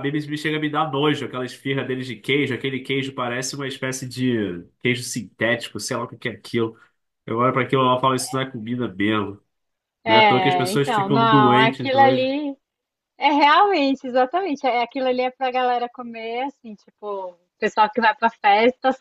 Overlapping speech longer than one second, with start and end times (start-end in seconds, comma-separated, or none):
10.0-12.3